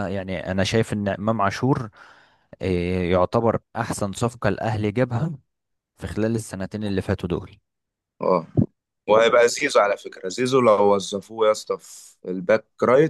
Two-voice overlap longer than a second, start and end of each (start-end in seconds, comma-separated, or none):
none